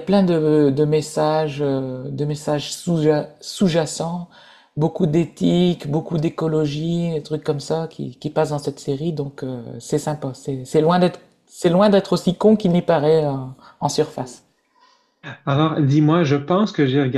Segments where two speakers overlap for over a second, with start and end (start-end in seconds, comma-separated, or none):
none